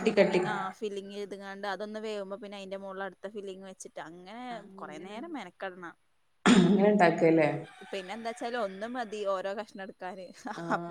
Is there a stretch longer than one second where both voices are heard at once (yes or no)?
no